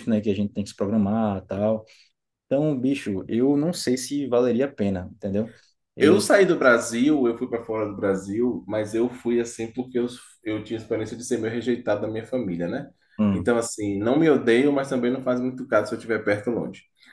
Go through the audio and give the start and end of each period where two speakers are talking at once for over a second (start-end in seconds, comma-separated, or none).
none